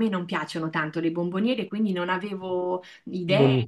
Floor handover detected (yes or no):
no